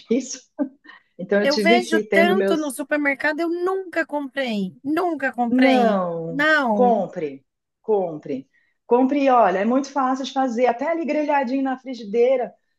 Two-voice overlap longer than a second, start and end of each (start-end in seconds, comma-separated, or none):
1.4-2.8, 5.5-7.1